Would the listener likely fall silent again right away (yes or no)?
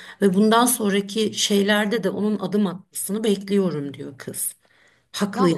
no